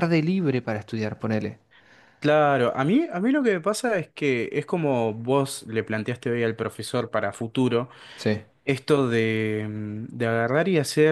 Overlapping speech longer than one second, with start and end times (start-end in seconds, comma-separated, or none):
none